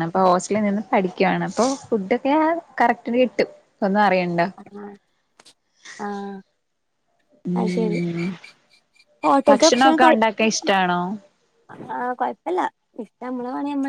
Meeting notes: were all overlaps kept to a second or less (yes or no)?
no